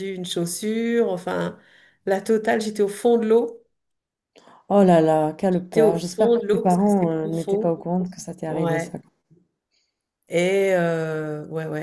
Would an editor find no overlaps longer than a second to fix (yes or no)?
no